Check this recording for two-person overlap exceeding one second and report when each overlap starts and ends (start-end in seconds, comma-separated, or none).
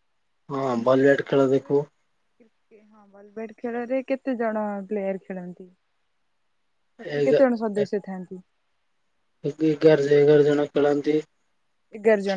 none